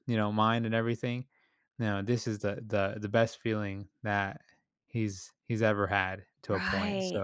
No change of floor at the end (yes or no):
no